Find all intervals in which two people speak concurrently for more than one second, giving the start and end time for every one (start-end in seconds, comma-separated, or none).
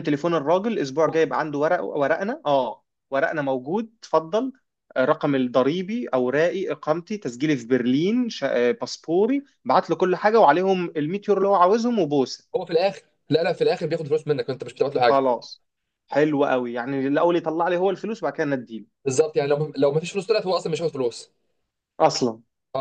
none